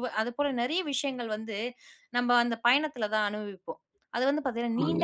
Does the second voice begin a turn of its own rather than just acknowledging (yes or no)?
no